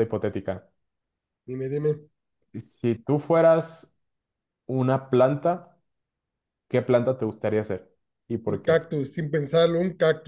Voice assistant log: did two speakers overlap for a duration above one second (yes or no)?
no